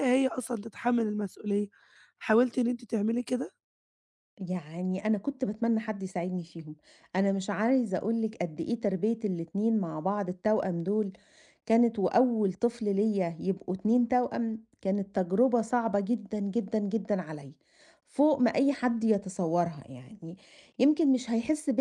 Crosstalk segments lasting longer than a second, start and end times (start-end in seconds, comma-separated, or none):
none